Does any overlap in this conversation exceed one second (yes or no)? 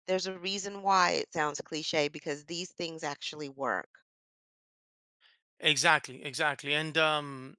no